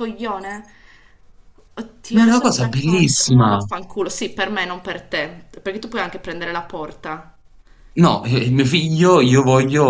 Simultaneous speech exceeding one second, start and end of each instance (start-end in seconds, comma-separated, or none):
2.1-3.6